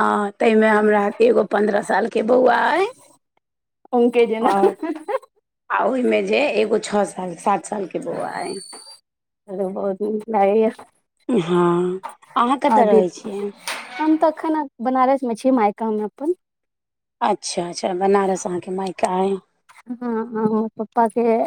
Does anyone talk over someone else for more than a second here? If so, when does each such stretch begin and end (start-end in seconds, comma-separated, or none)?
none